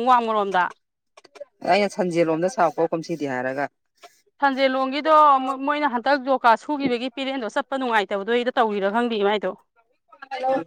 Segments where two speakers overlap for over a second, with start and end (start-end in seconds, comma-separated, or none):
none